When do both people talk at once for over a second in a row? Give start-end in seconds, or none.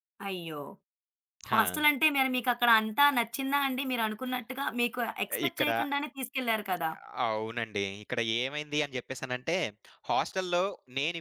none